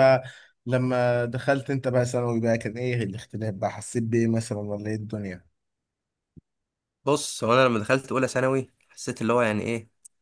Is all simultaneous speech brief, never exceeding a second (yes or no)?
yes